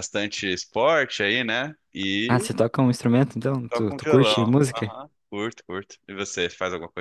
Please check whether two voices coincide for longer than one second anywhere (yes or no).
yes